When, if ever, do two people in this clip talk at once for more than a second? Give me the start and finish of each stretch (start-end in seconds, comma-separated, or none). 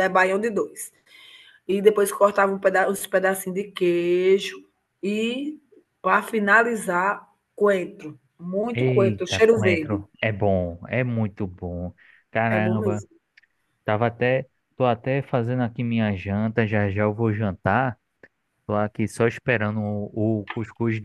8.7-10.0